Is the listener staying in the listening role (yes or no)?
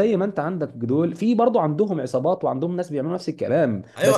no